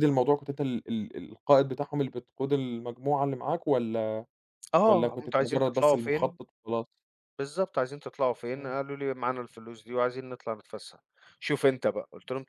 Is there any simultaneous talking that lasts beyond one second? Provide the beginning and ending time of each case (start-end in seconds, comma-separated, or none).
4.9-6.4